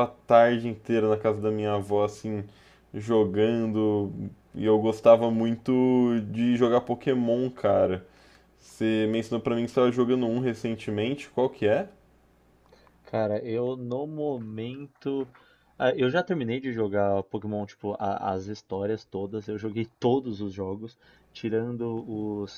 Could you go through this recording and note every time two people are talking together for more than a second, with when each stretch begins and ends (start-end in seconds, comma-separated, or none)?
none